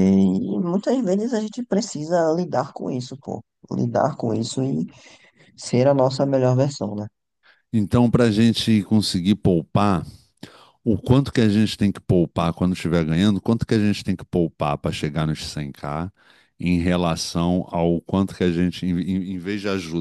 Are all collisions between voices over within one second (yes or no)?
yes